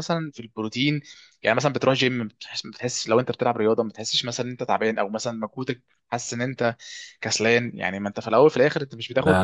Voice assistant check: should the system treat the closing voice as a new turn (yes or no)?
no